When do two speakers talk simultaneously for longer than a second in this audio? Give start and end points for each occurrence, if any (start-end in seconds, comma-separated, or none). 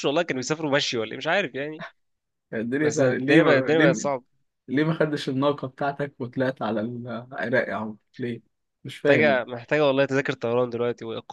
2.8-4.0